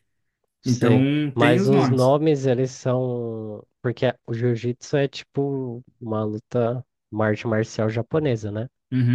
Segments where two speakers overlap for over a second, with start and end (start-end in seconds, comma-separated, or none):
0.6-2.2